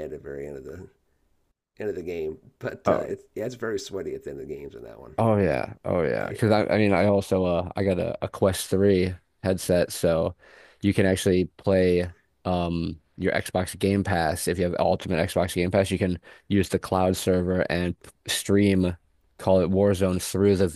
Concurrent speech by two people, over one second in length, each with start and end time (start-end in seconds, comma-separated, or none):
none